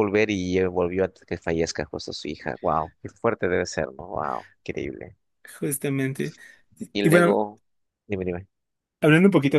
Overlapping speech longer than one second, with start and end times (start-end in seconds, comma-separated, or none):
none